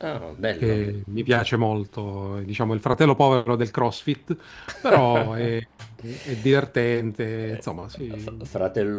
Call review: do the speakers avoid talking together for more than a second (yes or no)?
yes